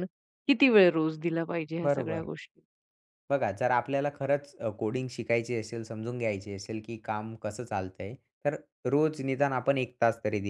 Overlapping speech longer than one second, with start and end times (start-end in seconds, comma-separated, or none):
none